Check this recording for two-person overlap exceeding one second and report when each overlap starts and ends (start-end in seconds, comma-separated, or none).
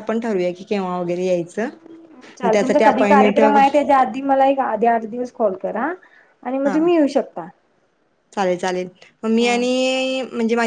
2.4-3.7